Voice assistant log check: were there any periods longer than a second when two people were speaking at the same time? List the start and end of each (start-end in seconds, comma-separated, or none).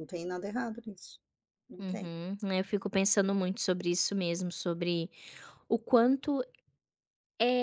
none